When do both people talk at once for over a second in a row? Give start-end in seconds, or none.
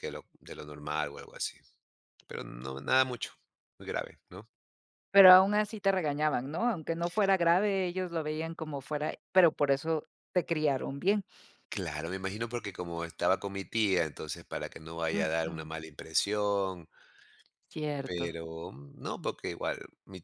none